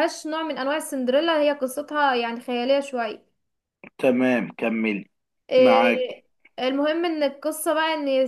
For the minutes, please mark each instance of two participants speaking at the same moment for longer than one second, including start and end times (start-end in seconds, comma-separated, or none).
none